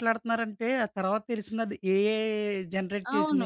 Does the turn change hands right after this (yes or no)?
yes